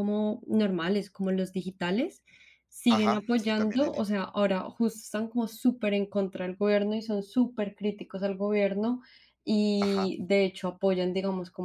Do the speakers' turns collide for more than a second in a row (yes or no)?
yes